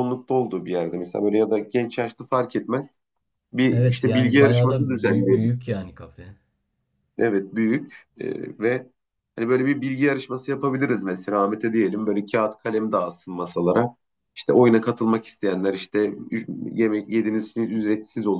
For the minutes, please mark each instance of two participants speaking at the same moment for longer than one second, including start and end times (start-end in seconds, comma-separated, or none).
3.7-5.5